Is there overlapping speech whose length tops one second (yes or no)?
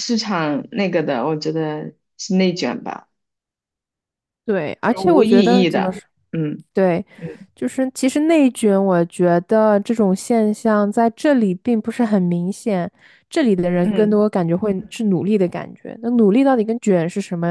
yes